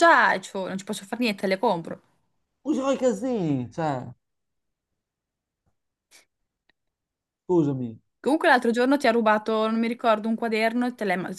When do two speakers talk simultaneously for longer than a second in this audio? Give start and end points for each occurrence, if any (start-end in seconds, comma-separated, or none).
none